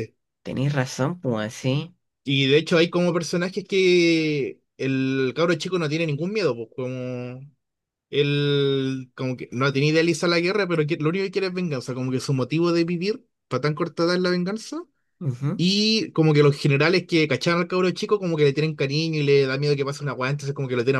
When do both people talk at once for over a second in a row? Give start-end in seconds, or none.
none